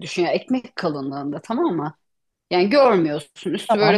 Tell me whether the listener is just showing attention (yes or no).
no